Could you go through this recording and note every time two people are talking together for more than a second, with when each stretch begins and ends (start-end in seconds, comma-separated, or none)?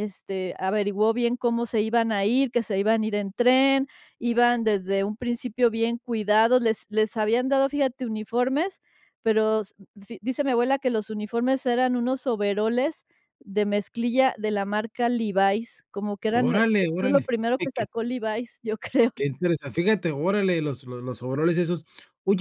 16.3-17.8